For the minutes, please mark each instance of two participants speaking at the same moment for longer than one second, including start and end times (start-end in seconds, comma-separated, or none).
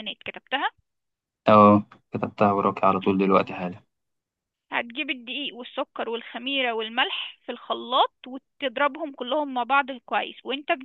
none